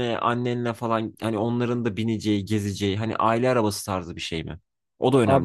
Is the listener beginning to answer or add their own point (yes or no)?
yes